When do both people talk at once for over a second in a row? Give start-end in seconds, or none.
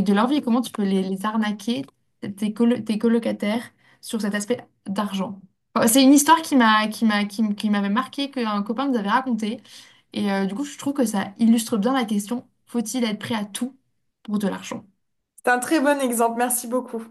none